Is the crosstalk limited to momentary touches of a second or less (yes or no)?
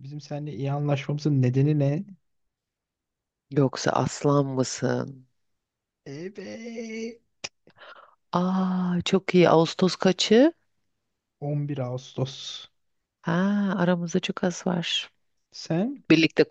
yes